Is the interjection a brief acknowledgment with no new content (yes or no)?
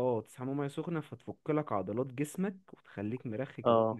no